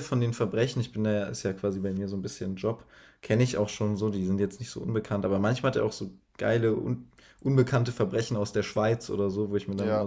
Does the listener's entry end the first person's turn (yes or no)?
no